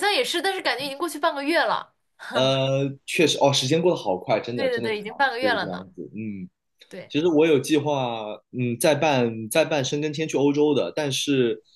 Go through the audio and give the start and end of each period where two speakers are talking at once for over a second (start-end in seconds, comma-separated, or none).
4.5-5.9